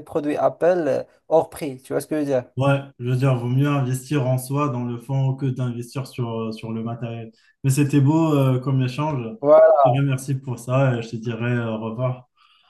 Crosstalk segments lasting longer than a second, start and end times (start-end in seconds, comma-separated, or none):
none